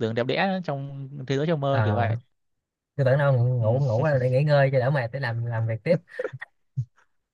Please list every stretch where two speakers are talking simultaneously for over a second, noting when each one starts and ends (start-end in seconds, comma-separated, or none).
none